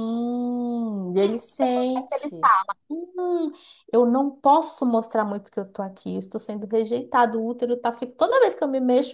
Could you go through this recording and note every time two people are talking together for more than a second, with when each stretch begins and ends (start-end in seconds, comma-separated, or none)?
none